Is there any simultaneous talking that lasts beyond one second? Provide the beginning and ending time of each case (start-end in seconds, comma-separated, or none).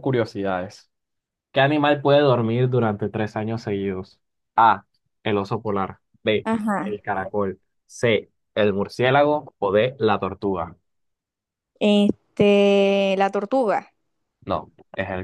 none